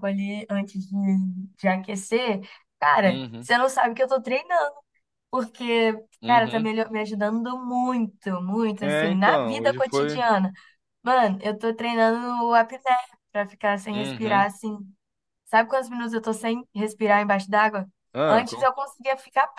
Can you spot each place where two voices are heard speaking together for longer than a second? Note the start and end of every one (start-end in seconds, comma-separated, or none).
8.8-10.2